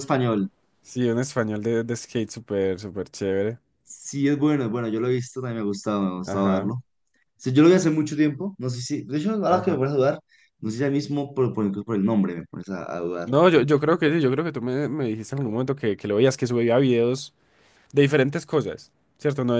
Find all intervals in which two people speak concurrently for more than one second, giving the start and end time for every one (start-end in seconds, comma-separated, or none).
none